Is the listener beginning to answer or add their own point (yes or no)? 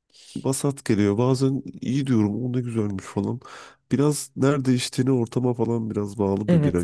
yes